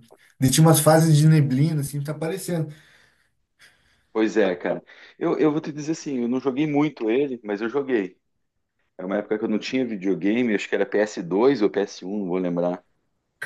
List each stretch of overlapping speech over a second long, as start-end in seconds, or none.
none